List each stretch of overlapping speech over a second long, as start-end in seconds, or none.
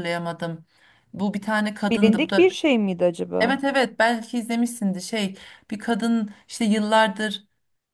none